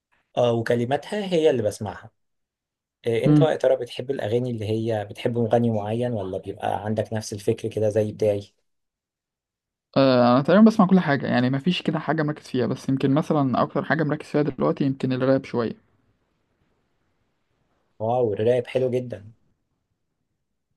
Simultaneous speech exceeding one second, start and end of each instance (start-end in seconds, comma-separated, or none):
none